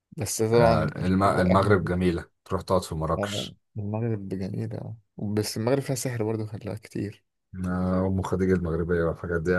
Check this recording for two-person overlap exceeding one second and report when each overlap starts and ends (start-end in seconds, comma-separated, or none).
0.5-2.2